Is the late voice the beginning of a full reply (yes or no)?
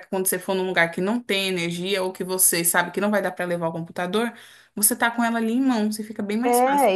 yes